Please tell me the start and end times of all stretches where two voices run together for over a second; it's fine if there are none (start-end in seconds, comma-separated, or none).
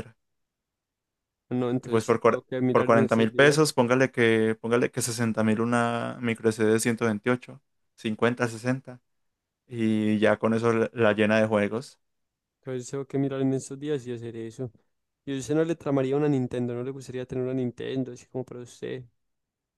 1.8-3.6